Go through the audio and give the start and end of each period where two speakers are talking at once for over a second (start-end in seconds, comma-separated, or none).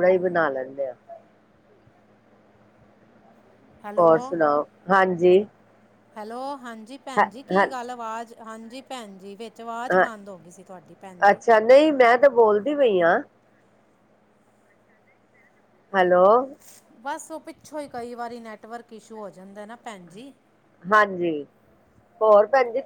none